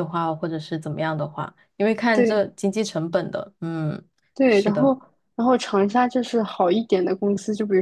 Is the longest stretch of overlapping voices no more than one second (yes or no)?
yes